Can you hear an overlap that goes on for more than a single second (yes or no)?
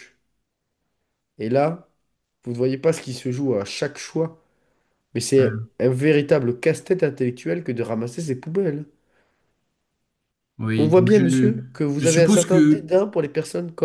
yes